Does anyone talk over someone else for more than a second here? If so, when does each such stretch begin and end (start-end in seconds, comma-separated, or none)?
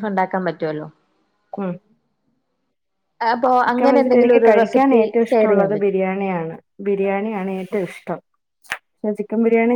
3.6-5.9